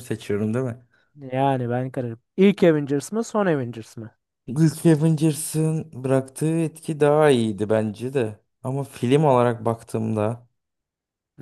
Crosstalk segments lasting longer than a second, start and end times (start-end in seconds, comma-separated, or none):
none